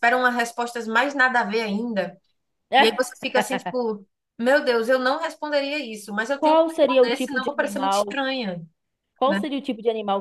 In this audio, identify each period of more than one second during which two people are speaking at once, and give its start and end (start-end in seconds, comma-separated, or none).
6.3-8.2